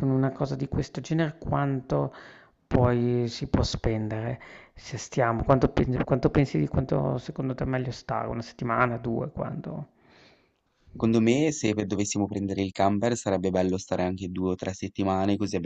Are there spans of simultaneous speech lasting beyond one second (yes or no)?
no